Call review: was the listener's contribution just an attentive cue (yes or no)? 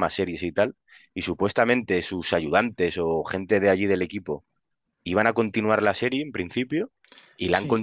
yes